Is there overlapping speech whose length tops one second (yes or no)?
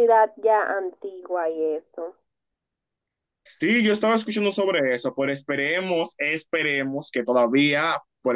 no